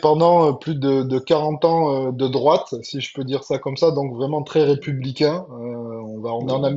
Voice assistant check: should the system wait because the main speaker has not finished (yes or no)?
yes